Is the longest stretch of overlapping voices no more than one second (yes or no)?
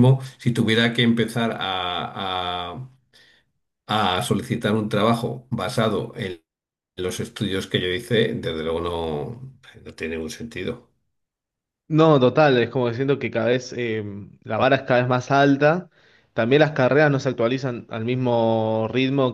yes